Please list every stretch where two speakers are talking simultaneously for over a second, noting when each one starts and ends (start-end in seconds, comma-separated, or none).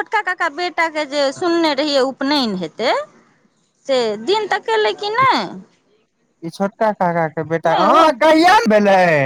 none